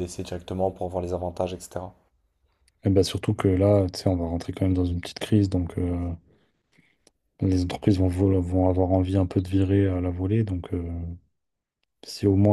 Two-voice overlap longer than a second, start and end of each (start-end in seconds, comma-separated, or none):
none